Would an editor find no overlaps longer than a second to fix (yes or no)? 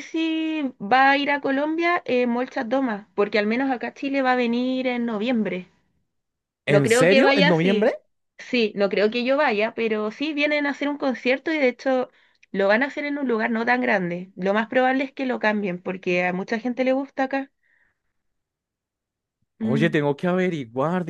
no